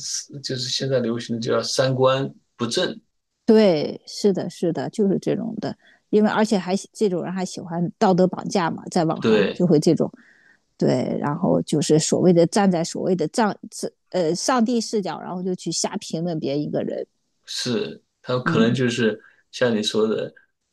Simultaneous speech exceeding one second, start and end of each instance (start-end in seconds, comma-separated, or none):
none